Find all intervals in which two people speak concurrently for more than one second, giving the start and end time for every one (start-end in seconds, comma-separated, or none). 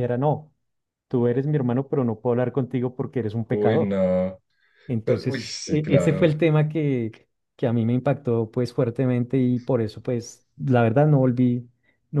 5.0-6.3